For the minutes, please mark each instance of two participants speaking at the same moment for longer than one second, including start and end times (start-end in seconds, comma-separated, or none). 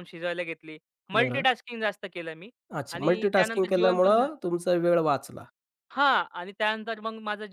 2.9-4.3